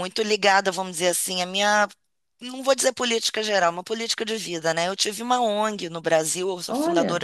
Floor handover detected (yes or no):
no